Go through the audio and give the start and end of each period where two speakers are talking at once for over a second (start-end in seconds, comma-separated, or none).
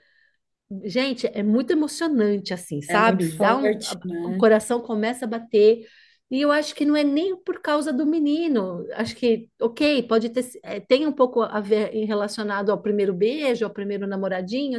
2.9-4.4